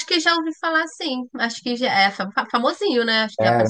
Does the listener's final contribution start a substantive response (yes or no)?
yes